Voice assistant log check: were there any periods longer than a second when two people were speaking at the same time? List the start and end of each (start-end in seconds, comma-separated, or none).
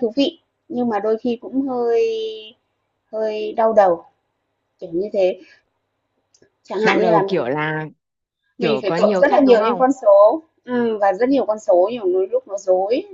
8.6-9.8